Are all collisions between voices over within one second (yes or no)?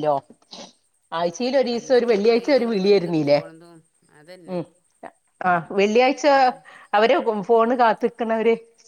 no